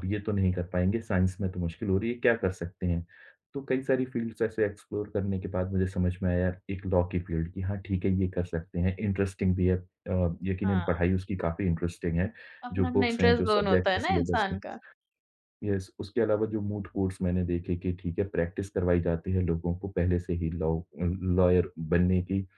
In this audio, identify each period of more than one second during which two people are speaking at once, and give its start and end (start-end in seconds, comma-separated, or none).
12.7-14.6